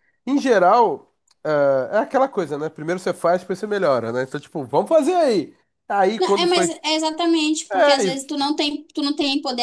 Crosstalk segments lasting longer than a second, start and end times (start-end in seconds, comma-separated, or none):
none